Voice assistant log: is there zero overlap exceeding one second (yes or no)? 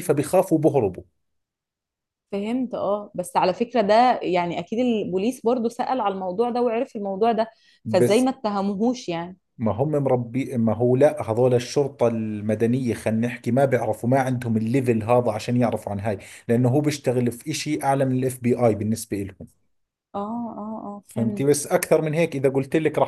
yes